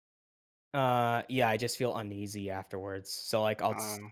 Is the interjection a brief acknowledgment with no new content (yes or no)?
yes